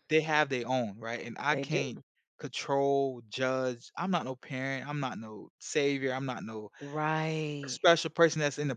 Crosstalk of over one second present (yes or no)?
no